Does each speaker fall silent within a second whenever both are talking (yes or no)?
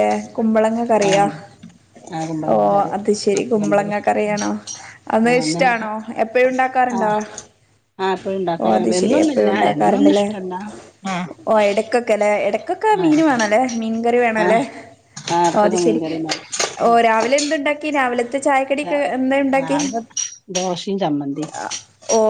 no